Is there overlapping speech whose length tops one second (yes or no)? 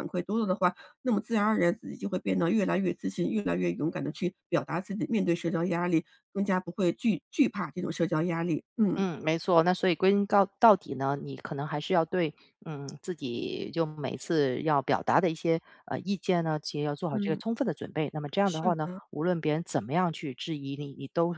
no